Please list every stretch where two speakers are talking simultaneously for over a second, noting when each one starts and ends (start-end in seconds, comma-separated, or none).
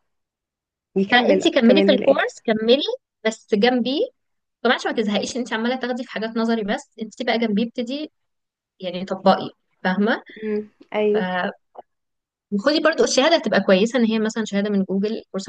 1.1-2.3